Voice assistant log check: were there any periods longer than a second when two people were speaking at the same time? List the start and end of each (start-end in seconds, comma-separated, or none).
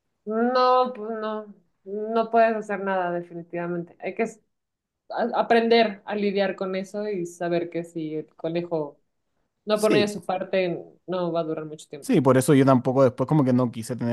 none